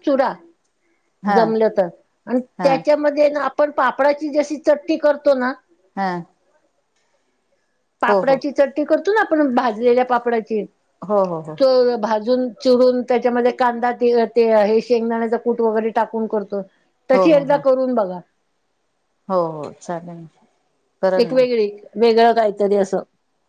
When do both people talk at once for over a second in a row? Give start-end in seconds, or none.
none